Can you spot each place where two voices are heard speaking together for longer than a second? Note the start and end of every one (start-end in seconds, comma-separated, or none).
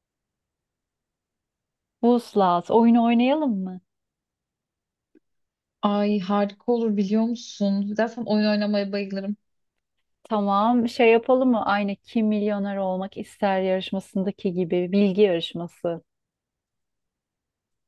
none